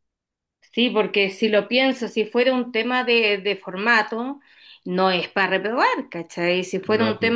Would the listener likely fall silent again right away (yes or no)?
yes